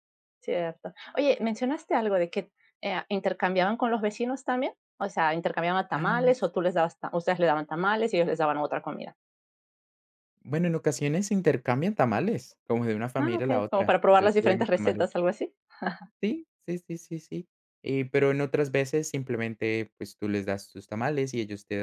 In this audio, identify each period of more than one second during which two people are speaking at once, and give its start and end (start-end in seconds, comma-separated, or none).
13.2-15.1